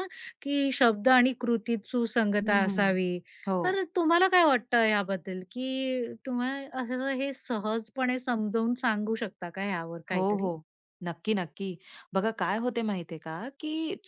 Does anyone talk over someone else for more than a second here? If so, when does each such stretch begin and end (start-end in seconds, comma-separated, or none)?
none